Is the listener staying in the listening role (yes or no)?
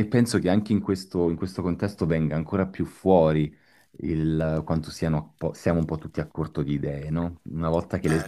yes